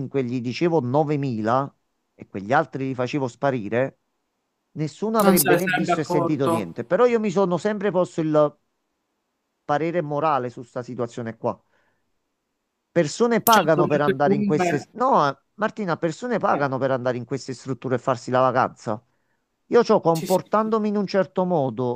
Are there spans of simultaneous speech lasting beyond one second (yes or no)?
yes